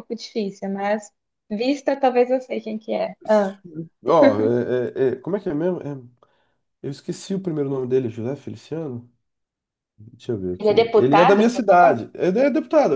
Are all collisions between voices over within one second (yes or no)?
no